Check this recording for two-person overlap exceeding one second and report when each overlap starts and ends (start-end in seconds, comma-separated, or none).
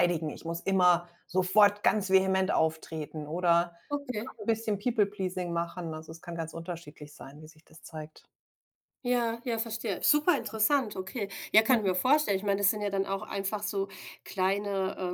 none